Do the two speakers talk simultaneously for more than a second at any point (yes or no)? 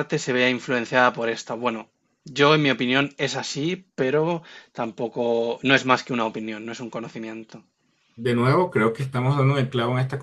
no